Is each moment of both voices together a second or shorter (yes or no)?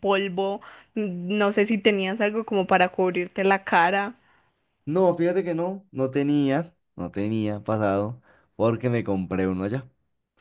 yes